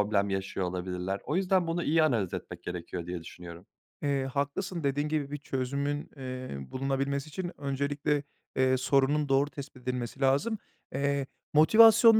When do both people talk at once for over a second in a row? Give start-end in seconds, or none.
none